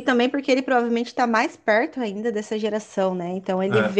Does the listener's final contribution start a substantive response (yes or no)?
no